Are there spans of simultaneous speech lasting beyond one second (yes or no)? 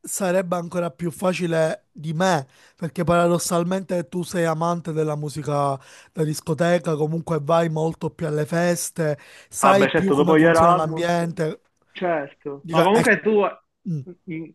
yes